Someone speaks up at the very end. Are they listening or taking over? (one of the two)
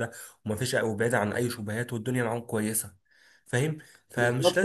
taking over